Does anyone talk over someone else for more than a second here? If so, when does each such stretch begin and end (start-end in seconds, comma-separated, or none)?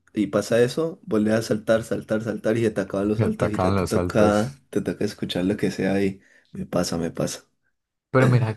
3.2-4.6